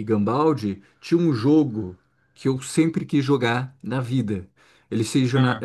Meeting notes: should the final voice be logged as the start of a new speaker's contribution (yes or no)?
no